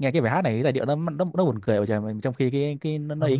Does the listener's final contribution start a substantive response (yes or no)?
yes